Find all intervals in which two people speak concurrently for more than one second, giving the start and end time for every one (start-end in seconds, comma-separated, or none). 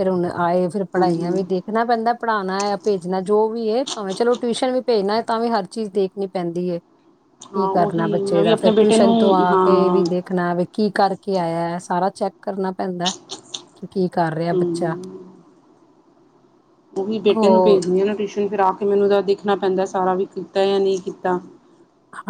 7.5-10.1